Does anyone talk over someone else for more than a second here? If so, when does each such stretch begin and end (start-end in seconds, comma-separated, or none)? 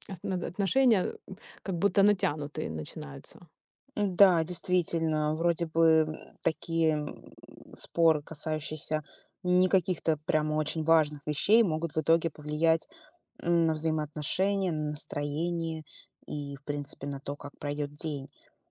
none